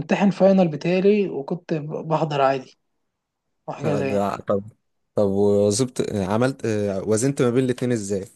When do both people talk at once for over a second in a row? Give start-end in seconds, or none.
none